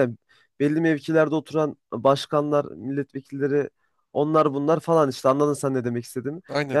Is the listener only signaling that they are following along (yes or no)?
yes